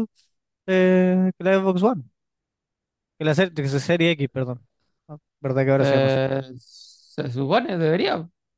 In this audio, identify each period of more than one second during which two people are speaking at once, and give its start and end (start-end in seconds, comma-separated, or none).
none